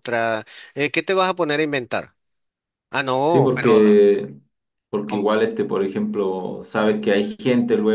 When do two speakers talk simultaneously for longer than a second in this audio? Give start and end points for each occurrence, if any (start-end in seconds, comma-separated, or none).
none